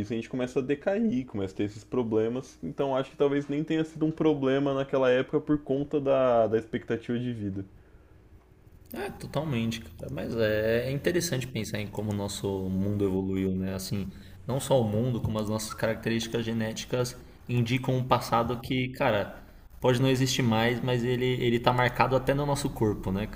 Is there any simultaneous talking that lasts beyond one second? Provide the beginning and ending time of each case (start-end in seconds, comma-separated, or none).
none